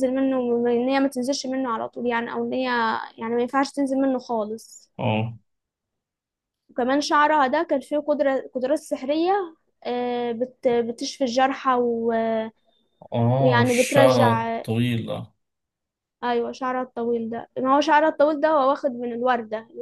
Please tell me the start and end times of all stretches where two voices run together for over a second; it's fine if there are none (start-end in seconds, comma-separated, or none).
13.4-14.6